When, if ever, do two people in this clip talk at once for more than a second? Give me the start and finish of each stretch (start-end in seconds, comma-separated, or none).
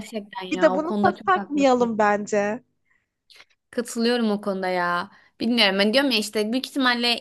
0.5-1.9